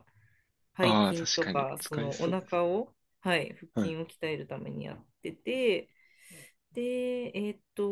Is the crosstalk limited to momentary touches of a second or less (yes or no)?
no